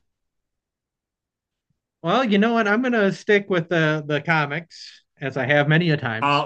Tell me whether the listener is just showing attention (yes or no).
no